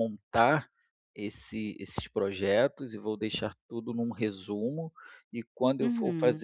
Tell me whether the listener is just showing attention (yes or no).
yes